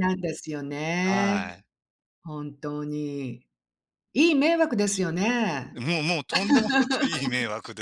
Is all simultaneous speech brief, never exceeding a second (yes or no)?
yes